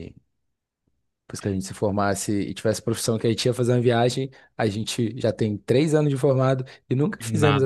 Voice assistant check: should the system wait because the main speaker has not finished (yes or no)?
no